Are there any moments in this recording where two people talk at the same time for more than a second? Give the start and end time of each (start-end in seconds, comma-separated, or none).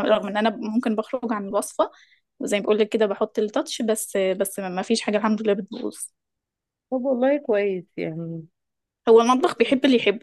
none